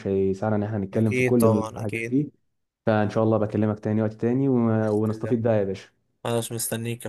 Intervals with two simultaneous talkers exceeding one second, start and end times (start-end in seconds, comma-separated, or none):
0.9-2.2